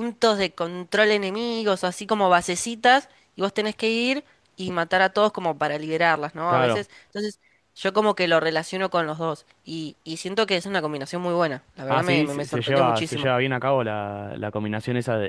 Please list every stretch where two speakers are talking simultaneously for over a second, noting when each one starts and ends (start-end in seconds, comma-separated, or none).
11.9-13.3